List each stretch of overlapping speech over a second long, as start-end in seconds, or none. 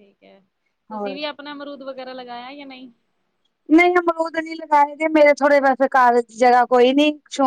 none